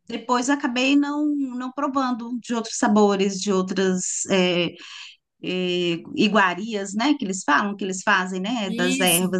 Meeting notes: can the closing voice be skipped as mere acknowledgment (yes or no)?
no